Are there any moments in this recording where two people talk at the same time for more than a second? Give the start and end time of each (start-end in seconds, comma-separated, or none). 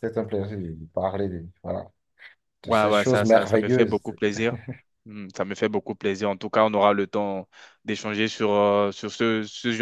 2.6-4.0